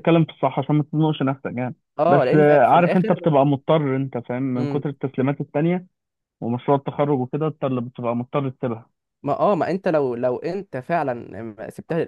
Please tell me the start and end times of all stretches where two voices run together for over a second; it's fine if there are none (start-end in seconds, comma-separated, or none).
2.0-3.3